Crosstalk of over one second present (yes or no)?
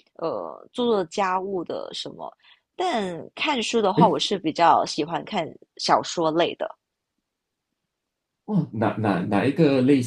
no